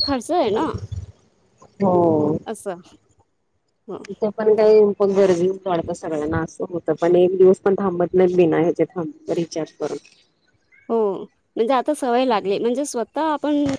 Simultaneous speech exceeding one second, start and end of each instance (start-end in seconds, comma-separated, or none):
none